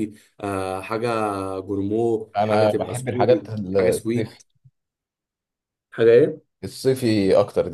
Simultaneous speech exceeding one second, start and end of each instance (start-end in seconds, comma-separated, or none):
2.4-4.4